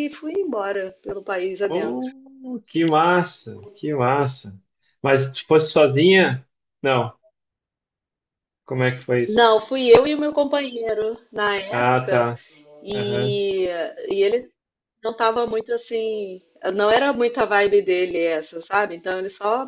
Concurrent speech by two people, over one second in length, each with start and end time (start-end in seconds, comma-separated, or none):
none